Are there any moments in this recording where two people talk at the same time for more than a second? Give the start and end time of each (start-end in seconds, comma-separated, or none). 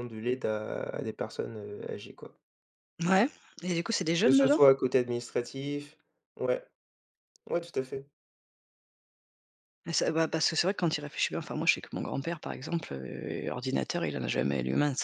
none